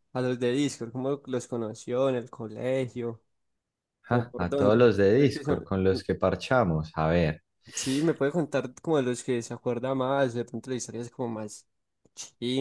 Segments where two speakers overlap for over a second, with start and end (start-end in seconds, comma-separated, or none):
4.1-5.7